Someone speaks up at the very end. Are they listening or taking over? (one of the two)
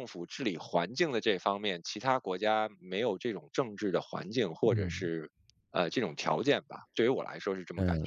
taking over